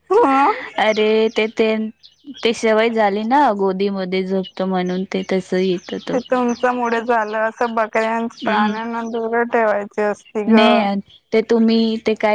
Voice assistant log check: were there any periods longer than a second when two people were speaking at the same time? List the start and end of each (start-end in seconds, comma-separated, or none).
none